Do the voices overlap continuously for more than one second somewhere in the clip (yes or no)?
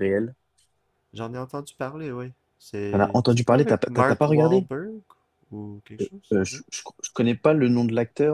yes